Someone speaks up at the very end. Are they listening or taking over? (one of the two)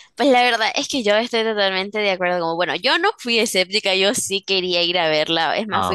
listening